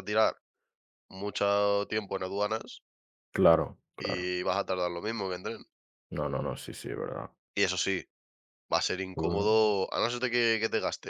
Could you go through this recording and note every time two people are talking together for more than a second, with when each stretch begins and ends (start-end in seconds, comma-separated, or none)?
none